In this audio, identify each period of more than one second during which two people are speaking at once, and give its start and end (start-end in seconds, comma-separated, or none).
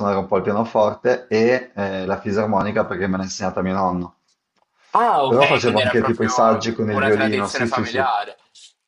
5.2-8.1